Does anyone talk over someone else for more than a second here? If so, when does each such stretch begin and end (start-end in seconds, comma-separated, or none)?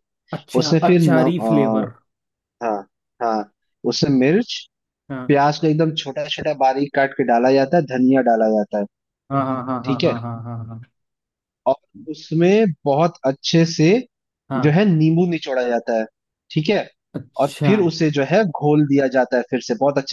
0.6-1.9